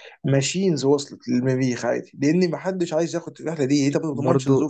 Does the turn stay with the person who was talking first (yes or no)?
no